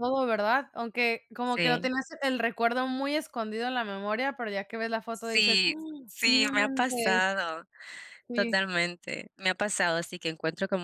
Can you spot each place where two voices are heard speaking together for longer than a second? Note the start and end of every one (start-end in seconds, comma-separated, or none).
5.1-7.2